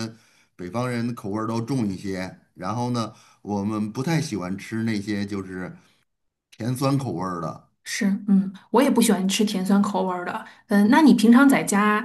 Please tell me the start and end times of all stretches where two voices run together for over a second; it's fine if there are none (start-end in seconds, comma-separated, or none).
none